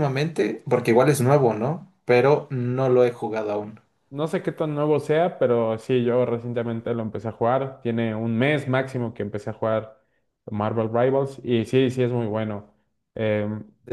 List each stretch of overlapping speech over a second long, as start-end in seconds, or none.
none